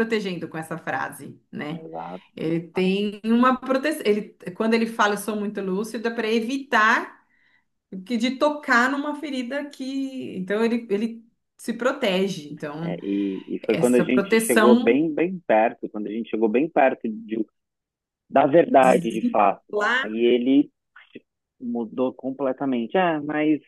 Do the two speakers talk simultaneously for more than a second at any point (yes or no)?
yes